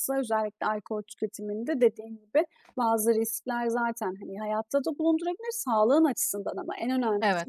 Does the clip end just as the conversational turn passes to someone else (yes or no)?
no